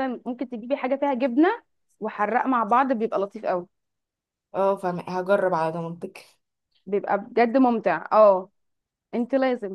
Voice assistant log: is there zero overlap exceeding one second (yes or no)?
yes